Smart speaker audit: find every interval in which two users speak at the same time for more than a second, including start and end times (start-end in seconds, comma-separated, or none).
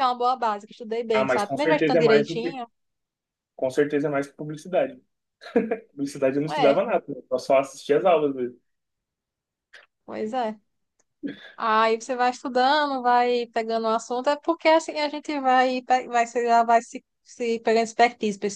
1.1-2.6